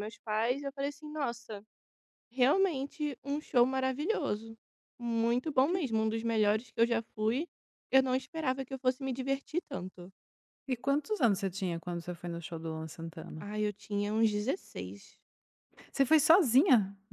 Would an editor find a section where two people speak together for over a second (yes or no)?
no